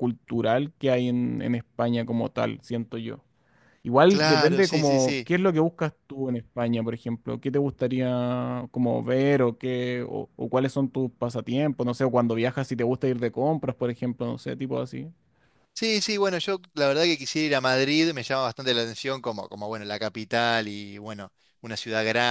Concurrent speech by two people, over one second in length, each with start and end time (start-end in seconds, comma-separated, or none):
4.1-5.3